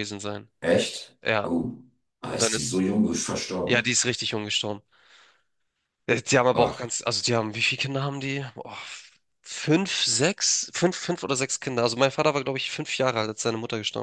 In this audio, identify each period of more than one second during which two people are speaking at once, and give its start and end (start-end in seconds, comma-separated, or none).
none